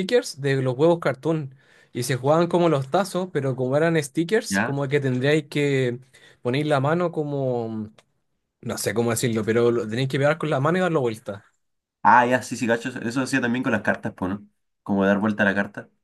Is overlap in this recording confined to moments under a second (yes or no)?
yes